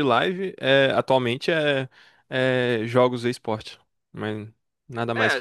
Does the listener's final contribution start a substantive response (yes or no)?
yes